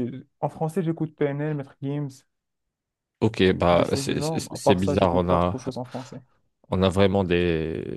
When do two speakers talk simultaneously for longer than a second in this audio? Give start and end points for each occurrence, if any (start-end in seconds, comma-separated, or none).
3.7-5.6